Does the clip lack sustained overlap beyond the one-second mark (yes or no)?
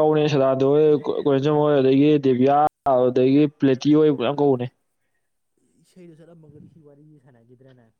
yes